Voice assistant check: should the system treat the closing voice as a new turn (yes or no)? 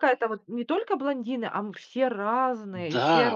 yes